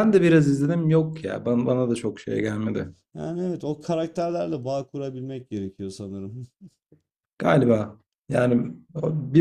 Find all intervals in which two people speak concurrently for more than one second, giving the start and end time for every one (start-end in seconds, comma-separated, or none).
none